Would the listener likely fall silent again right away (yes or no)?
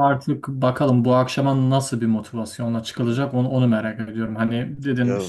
yes